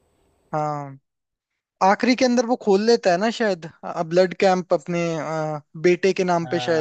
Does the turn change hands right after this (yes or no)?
yes